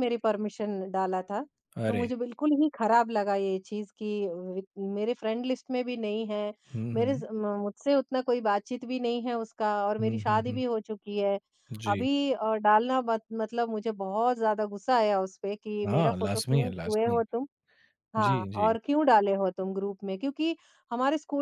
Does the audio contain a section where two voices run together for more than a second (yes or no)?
yes